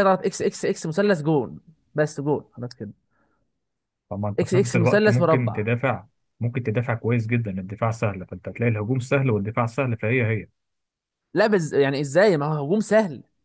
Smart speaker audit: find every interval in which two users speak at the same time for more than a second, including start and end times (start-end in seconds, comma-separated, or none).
4.4-5.6